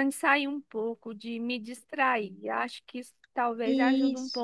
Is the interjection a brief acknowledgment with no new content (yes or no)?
yes